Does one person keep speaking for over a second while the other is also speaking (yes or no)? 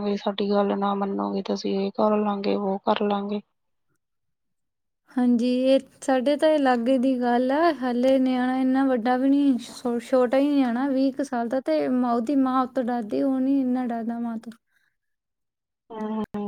no